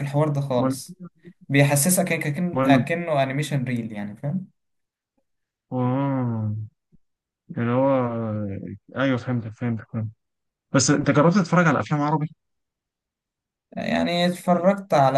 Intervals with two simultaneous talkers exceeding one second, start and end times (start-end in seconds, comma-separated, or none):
none